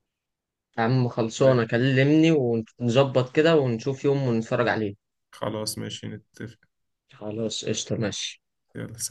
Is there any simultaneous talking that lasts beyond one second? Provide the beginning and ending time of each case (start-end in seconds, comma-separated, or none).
none